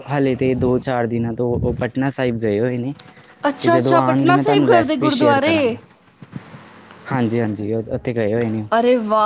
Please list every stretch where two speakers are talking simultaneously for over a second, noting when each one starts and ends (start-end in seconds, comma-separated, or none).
3.6-5.6